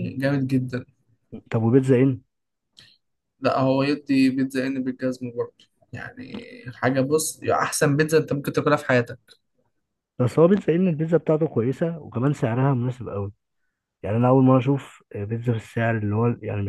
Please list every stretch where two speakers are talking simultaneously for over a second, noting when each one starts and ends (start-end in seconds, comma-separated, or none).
none